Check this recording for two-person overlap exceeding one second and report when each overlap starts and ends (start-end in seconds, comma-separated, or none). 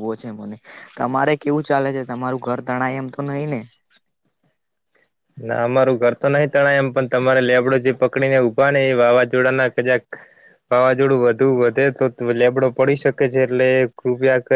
none